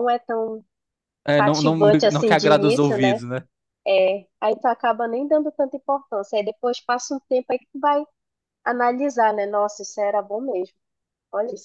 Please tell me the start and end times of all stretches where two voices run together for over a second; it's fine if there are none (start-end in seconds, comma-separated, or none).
1.4-3.2